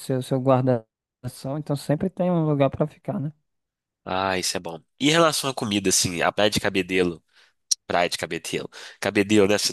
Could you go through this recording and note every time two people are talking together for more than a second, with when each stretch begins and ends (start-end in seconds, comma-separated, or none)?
none